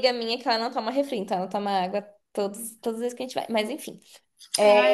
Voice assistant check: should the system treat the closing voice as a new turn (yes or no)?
yes